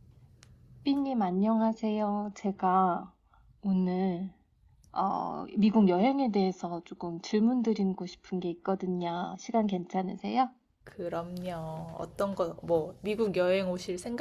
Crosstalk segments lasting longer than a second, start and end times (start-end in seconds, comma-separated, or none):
none